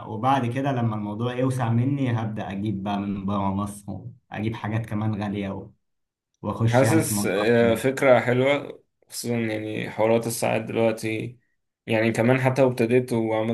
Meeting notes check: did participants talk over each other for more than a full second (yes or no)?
yes